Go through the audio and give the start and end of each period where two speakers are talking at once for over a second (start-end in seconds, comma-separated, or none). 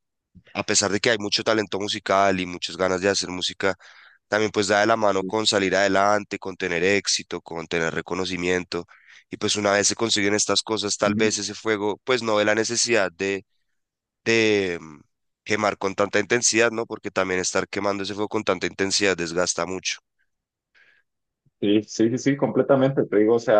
none